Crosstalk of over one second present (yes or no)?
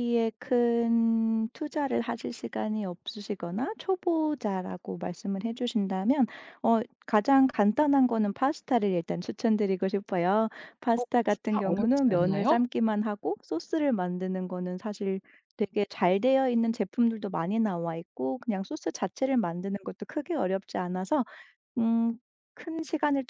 yes